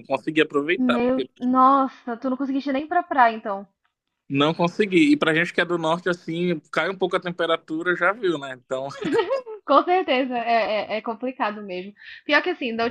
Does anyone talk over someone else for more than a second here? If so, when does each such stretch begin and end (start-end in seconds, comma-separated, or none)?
none